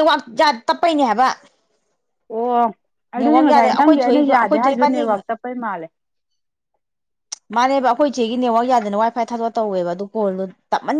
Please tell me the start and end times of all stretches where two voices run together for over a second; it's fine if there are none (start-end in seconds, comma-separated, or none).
3.2-5.0